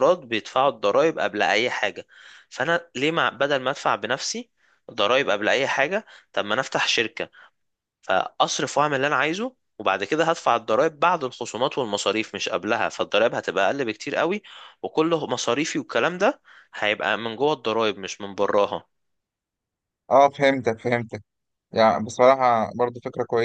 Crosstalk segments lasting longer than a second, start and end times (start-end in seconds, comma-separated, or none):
none